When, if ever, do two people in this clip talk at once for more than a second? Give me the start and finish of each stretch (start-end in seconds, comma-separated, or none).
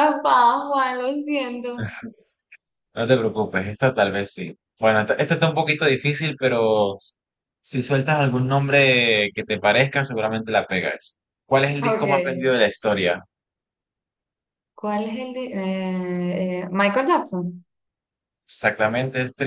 none